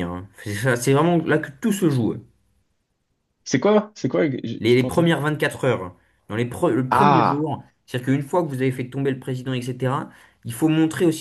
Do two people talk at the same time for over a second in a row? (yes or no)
no